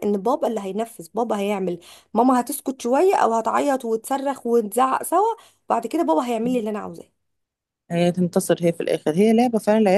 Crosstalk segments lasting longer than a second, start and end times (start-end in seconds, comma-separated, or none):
none